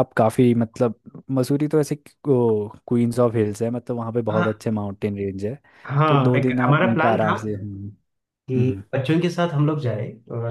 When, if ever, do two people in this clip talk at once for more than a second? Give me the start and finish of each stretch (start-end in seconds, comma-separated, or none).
6.1-7.4